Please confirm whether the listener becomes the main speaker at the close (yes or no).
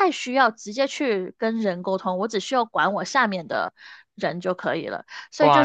yes